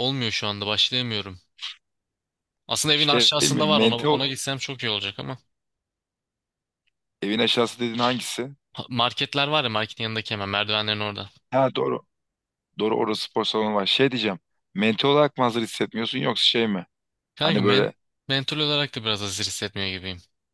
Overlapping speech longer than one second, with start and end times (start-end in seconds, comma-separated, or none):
2.9-4.2